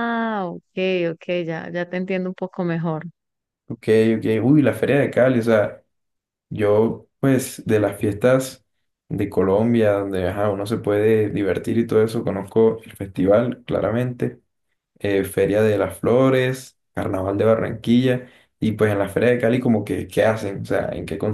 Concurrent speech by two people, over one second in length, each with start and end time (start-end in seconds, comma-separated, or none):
none